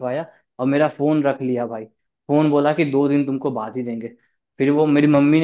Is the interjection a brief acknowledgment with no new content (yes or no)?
yes